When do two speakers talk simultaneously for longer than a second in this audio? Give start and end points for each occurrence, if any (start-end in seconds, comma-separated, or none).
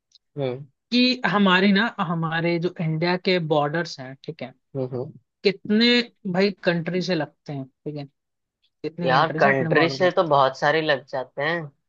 9.0-10.4